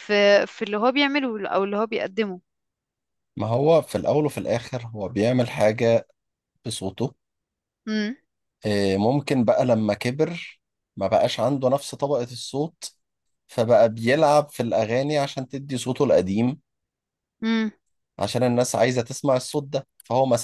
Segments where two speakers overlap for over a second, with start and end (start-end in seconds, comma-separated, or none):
none